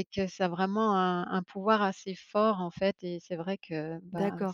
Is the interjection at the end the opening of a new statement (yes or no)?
yes